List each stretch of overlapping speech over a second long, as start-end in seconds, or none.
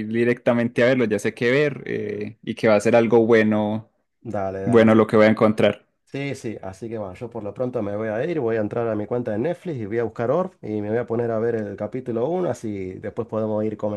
none